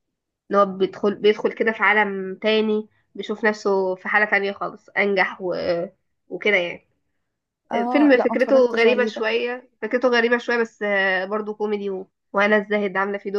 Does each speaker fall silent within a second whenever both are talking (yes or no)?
no